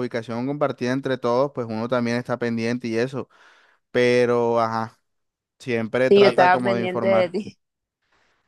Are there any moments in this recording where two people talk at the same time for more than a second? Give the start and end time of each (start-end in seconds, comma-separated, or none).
6.1-7.3